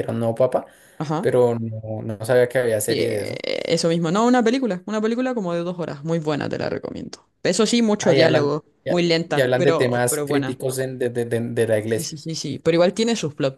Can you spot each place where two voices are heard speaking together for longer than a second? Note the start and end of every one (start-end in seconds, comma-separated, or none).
8.0-10.6